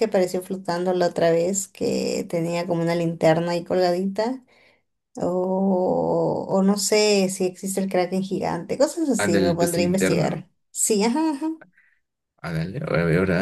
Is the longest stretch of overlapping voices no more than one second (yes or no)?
no